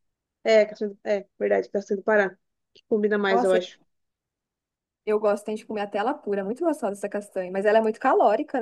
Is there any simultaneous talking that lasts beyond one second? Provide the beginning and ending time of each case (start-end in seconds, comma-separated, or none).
none